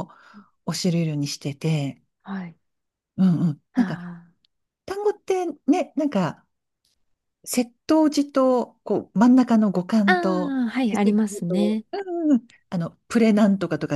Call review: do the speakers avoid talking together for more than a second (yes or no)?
no